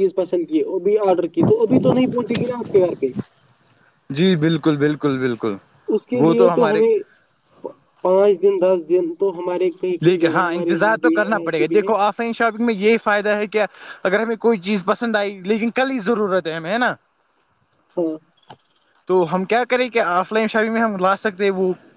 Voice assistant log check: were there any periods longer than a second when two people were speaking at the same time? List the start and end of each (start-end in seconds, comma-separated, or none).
10.1-11.9